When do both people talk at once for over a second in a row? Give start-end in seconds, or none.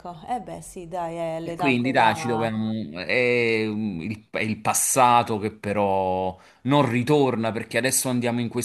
1.4-2.6